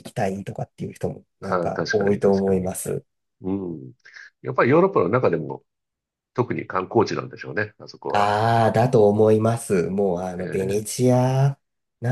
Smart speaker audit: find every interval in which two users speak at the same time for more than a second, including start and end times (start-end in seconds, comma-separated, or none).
1.4-2.7